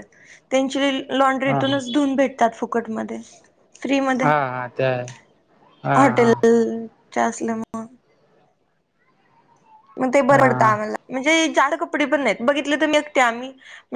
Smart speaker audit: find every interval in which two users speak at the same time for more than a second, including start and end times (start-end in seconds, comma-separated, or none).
none